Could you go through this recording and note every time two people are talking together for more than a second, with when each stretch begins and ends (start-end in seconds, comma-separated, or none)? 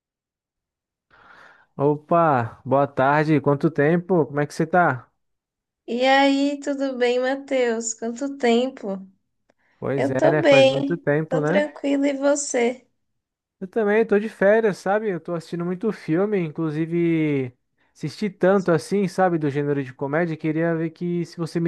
9.9-11.7